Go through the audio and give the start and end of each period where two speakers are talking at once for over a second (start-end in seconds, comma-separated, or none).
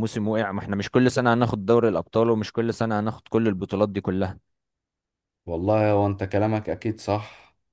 none